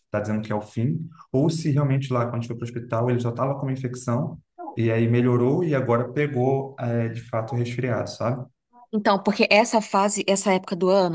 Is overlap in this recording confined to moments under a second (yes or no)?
yes